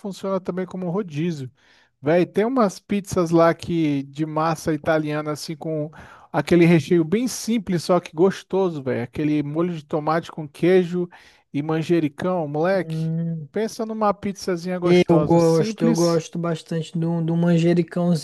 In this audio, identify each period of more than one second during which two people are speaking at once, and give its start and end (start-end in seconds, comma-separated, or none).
14.8-16.2